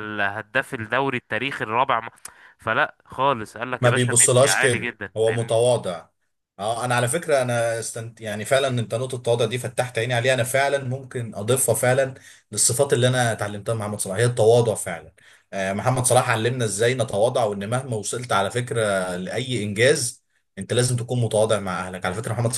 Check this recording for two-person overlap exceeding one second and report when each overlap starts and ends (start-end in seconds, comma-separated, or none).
3.8-5.6